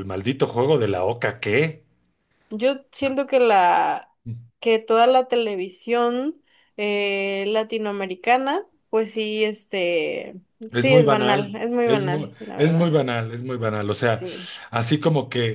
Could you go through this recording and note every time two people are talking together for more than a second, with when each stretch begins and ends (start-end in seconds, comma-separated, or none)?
10.7-12.9